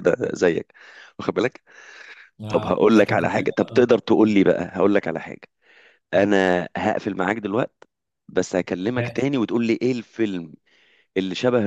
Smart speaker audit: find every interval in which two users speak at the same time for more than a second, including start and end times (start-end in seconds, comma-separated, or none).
2.5-4.4